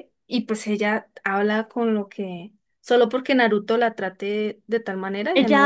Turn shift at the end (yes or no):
yes